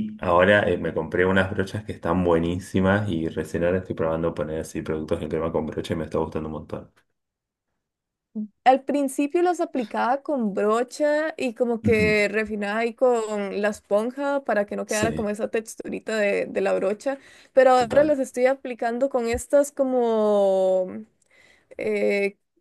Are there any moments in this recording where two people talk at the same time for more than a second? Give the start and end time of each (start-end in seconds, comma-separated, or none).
none